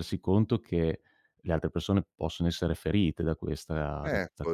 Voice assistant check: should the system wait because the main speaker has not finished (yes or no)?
no